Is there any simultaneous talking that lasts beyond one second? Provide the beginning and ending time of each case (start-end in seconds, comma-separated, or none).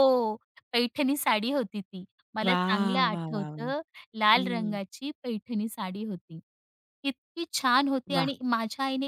2.4-3.7